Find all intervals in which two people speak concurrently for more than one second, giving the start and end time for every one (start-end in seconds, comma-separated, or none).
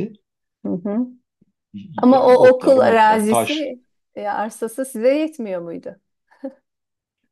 2.0-3.7